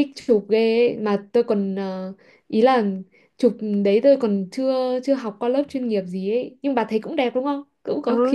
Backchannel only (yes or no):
no